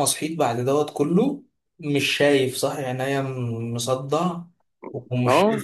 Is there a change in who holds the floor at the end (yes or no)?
no